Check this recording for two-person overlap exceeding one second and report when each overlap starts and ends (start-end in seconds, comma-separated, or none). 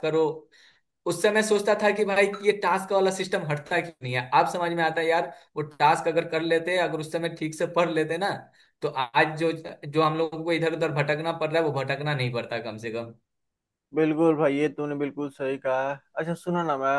none